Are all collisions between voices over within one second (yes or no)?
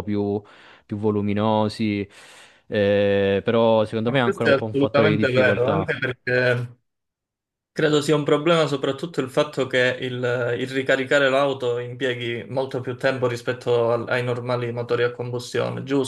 no